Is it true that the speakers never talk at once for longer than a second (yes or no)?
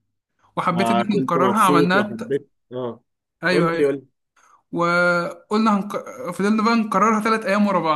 no